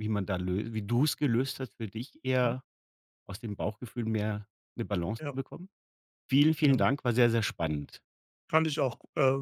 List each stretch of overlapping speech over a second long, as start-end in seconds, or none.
none